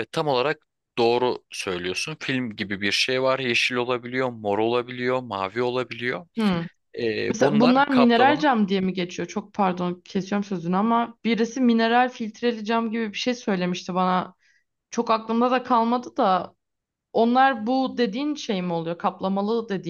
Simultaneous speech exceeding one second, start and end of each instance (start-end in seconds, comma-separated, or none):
7.3-8.5